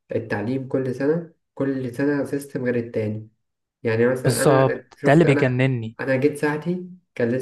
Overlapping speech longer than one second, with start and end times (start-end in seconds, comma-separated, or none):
4.2-5.5